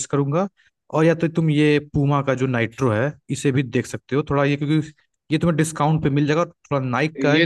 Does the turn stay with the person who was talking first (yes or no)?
no